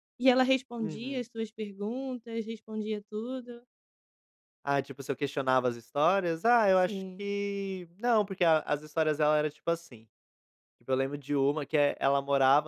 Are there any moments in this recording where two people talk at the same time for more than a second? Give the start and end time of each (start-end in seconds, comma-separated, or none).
none